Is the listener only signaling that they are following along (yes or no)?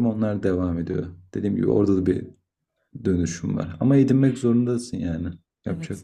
no